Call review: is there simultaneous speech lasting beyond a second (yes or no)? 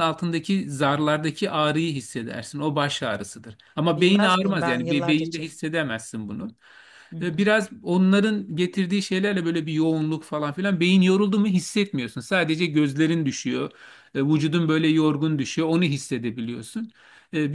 yes